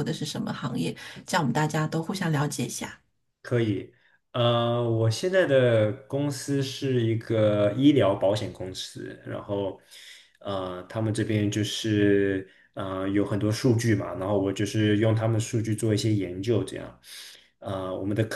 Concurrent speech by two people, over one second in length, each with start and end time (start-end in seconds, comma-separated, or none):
none